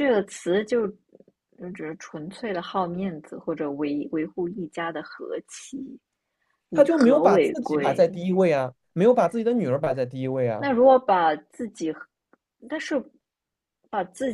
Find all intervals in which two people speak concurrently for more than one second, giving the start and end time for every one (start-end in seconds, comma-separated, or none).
6.7-8.1